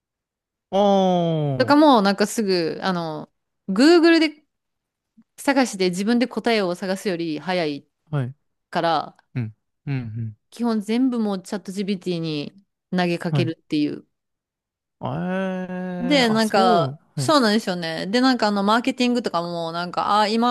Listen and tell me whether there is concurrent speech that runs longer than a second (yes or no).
yes